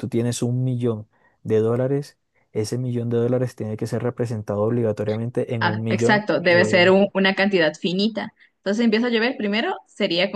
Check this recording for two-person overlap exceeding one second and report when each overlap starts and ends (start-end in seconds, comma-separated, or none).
5.6-7.0